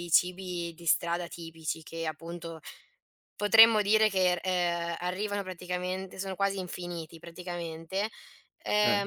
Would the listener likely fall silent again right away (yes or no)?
yes